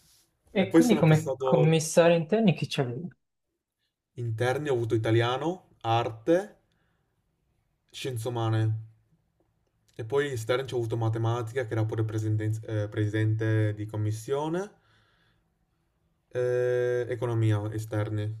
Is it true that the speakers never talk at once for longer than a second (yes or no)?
no